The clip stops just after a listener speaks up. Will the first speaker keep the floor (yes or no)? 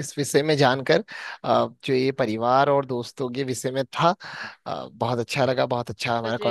yes